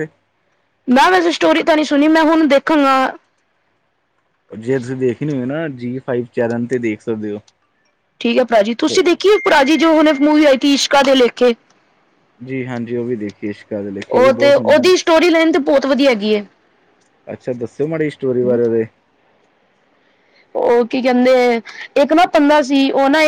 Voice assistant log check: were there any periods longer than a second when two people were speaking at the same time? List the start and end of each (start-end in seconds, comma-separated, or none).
none